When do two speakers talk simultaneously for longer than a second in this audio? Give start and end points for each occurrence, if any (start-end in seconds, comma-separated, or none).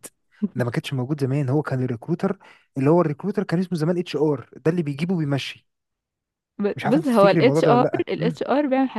6.8-8.4